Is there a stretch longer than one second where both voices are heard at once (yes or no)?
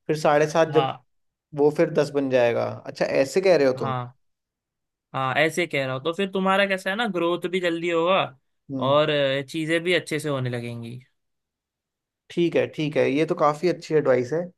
no